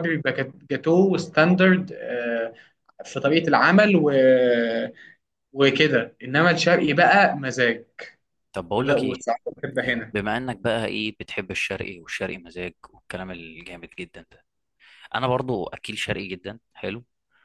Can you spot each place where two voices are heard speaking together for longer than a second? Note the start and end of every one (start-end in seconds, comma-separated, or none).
none